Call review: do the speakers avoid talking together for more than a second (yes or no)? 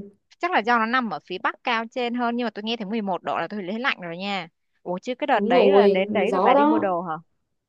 no